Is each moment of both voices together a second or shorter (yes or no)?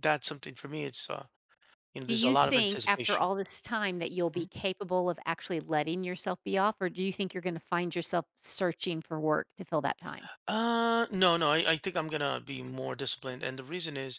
no